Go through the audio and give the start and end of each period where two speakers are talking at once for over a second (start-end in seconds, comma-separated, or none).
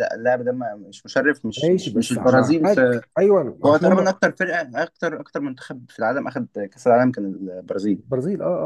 1.6-3.0